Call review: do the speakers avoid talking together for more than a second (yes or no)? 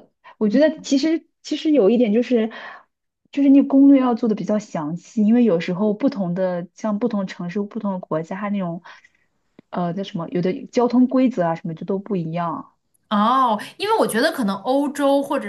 yes